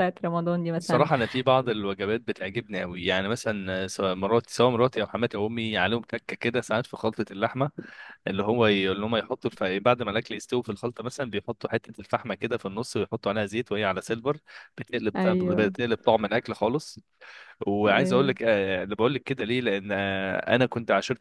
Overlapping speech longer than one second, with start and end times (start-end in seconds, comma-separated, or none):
none